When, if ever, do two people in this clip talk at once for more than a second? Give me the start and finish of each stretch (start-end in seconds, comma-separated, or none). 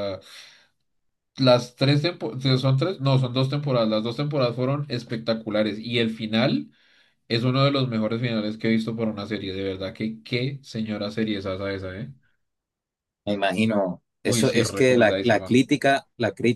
14.2-15.6